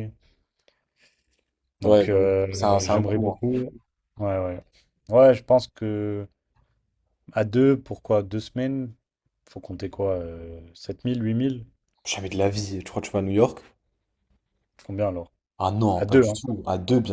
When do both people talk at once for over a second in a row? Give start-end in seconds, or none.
1.8-3.4